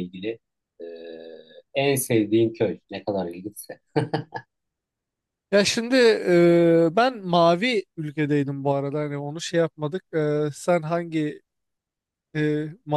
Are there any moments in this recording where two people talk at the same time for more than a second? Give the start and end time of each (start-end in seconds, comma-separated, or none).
none